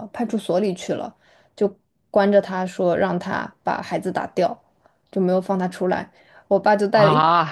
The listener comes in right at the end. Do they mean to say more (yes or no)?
no